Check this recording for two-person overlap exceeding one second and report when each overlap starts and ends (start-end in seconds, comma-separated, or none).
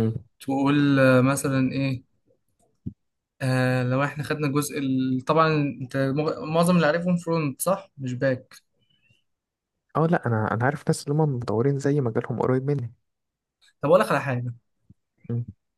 none